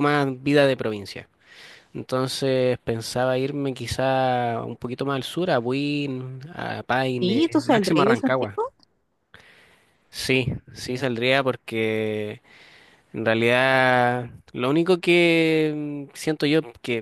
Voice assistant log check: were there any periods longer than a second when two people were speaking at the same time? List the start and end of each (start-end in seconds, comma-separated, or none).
7.2-8.6